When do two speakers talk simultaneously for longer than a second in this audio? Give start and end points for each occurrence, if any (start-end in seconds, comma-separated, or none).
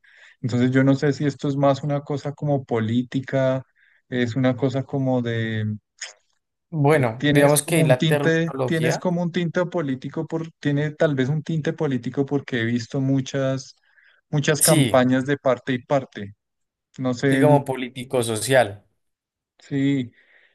6.9-9.0